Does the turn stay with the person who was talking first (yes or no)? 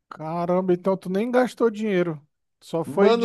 no